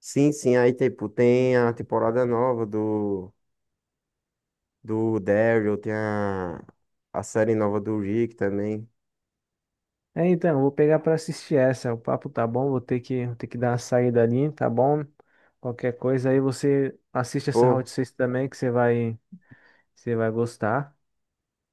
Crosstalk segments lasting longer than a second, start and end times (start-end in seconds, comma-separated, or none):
none